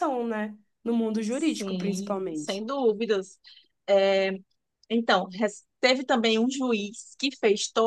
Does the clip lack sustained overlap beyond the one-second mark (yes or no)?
no